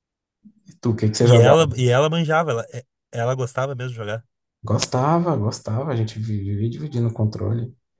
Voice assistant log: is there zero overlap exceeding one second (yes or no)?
yes